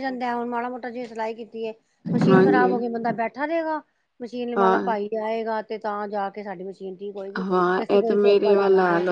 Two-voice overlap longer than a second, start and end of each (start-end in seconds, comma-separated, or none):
none